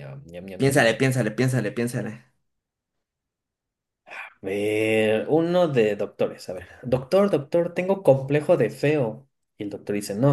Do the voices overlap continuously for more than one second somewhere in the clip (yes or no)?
no